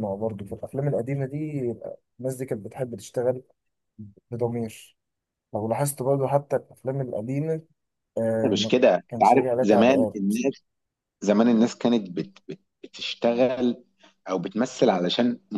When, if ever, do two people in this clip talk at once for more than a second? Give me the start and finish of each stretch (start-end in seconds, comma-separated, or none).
8.4-10.3